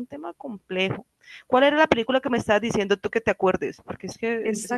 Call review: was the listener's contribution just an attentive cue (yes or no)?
no